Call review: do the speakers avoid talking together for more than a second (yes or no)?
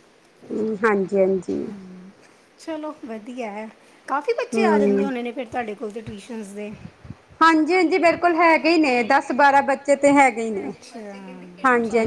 yes